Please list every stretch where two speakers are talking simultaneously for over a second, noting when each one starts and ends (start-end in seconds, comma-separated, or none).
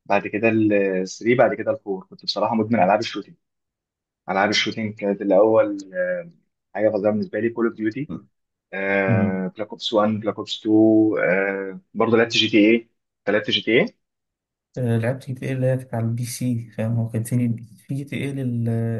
none